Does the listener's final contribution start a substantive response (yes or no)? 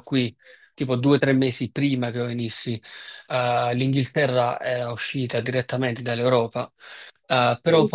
no